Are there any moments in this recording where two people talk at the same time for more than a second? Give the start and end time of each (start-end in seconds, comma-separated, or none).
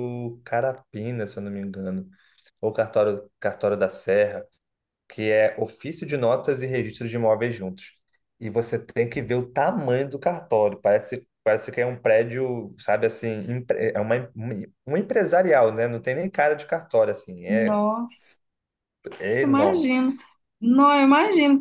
none